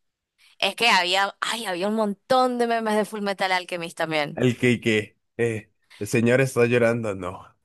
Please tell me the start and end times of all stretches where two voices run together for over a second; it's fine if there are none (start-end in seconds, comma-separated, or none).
none